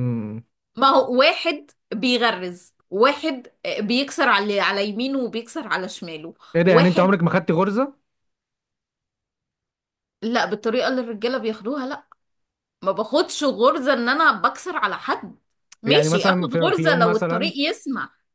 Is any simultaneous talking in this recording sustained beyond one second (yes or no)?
yes